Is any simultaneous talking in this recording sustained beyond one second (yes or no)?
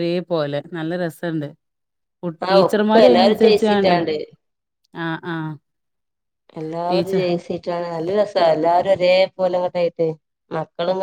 yes